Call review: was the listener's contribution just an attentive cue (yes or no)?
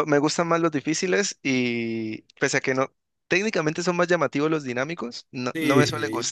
no